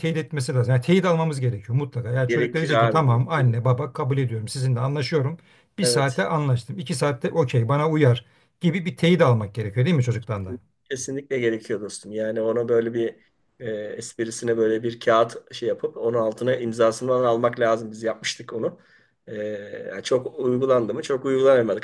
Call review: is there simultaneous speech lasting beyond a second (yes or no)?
yes